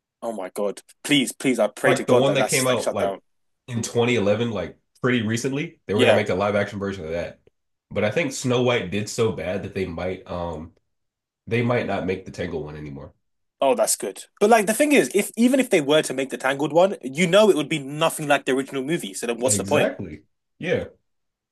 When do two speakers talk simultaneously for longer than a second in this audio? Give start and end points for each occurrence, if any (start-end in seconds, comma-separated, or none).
1.8-3.2